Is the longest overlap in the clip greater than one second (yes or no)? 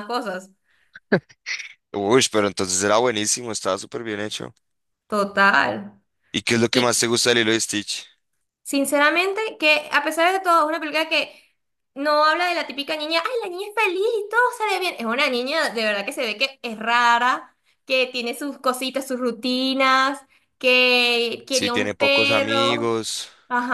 yes